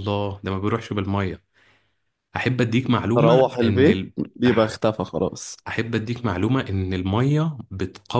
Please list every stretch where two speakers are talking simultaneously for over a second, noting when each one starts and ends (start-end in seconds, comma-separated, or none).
3.1-4.7